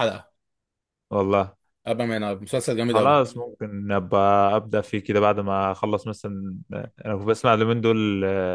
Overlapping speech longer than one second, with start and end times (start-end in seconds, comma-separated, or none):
none